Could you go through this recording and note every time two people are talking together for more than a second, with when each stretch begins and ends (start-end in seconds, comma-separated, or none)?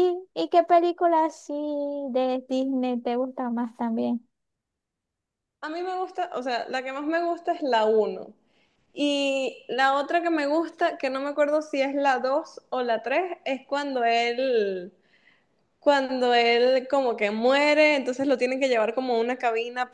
none